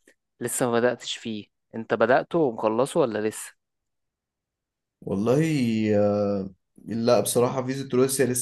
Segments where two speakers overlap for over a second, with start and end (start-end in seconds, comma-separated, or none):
none